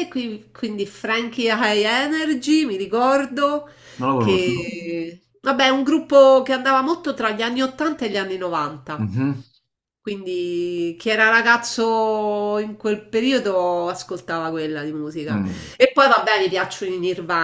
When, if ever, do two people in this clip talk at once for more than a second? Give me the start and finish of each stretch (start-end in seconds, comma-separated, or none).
none